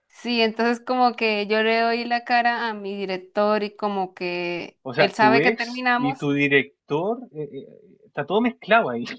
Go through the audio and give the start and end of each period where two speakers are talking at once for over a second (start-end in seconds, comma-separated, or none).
4.9-6.3